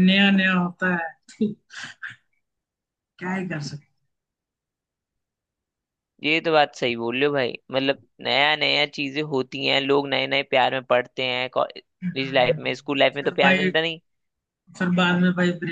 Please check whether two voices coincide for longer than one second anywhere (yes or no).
no